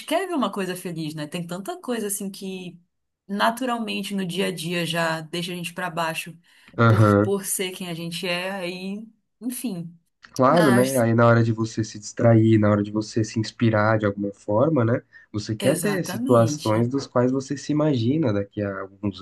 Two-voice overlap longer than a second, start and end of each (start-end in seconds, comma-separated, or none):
15.6-16.9